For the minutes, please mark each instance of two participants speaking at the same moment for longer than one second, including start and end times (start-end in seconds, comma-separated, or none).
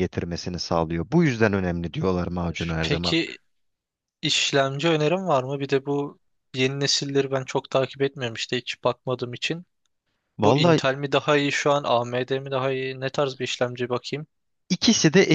none